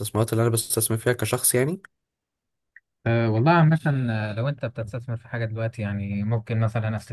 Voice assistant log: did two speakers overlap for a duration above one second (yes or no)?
no